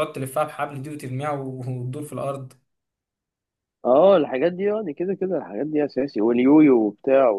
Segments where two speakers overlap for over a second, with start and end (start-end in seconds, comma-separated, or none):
none